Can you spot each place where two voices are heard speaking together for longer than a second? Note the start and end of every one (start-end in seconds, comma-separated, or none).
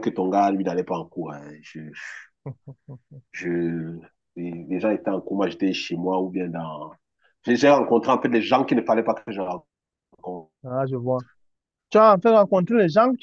none